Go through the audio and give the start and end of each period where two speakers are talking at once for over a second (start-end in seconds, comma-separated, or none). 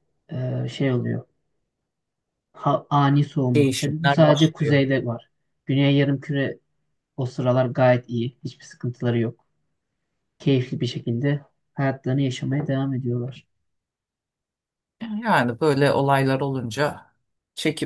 3.5-4.8